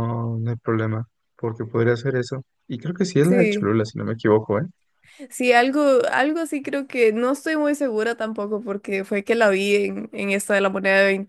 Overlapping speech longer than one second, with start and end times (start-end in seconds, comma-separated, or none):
none